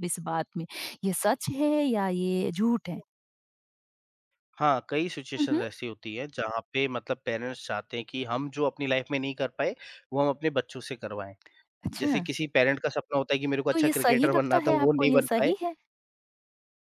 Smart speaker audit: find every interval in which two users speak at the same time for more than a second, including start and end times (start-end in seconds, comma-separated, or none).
13.7-15.5